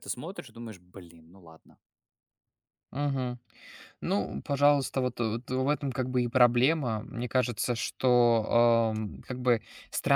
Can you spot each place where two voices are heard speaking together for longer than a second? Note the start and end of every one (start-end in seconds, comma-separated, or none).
none